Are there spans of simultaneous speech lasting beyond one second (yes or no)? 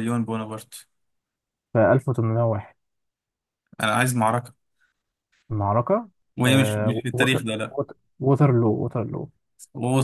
yes